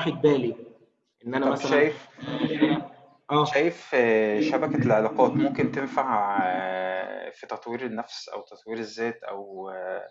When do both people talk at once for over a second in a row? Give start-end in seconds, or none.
none